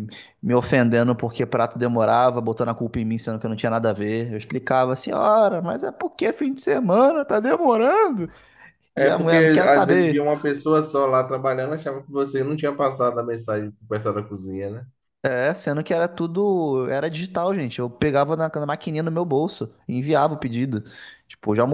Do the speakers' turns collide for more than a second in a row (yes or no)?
yes